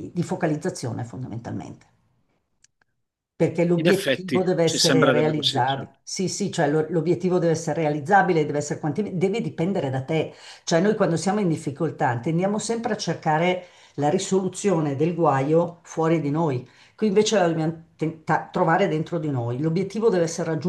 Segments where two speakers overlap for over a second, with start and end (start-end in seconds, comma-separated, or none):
3.8-6.0